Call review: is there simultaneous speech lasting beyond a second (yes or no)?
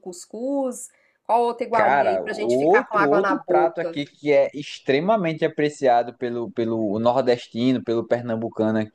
yes